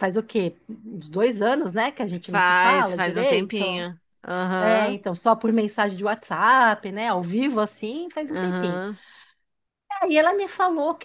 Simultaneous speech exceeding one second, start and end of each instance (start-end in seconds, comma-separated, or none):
2.2-3.9